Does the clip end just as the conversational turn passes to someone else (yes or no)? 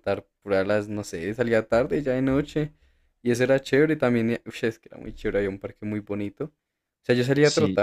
no